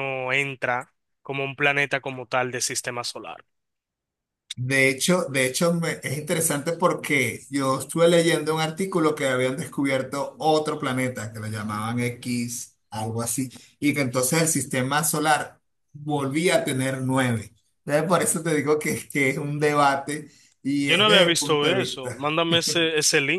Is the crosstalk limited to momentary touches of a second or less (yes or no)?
no